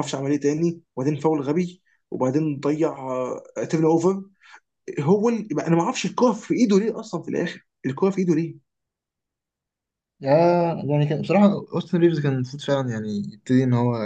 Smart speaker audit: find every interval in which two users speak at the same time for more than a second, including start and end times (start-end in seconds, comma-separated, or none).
none